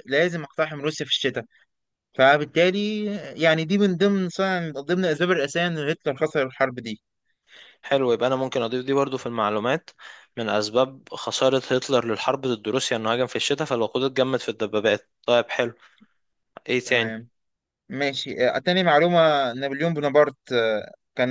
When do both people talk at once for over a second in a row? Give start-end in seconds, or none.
none